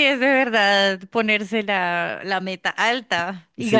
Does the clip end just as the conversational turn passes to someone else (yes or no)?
yes